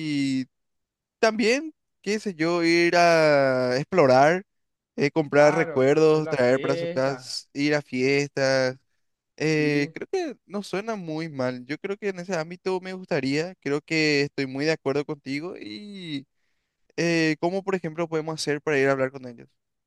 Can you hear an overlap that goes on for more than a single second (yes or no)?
yes